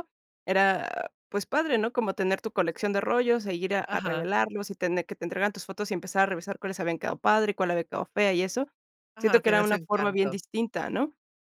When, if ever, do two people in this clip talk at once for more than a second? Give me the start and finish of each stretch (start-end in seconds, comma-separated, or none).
9.2-10.4